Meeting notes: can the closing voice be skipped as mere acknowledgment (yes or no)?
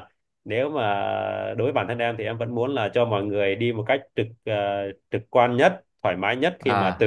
yes